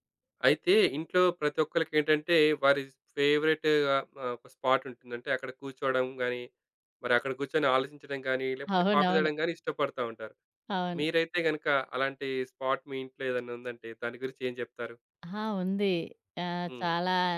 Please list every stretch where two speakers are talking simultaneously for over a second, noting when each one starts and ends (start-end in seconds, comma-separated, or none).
none